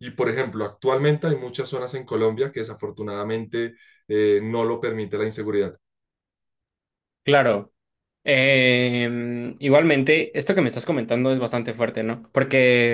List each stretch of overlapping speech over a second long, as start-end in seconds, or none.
none